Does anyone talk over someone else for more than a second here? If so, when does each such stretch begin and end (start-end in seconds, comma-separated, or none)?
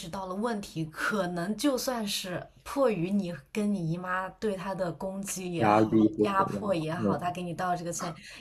5.6-7.2